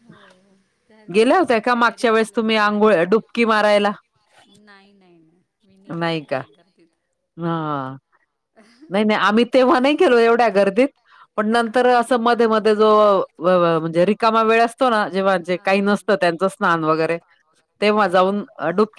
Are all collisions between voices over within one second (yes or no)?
no